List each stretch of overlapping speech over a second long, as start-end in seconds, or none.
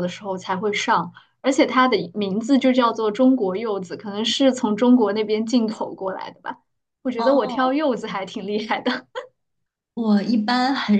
none